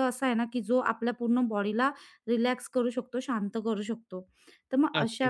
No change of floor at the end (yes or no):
yes